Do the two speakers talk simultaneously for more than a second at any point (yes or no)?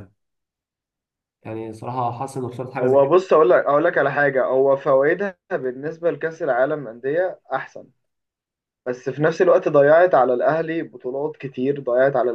no